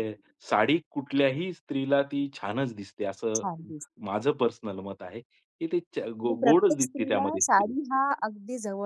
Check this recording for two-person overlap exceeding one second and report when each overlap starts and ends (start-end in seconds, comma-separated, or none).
6.2-7.7